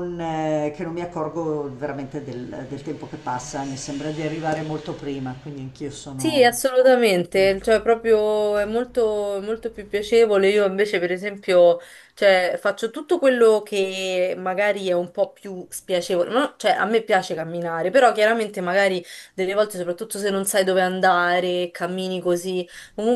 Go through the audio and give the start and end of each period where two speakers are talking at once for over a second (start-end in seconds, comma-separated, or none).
none